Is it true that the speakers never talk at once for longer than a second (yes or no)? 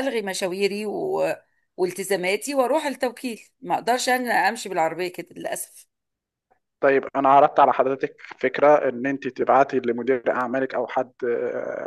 yes